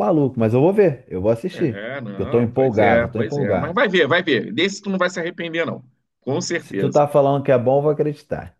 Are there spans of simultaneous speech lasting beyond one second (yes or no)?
yes